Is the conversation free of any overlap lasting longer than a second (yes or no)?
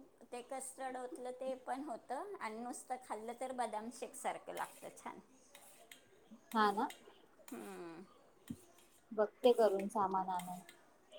yes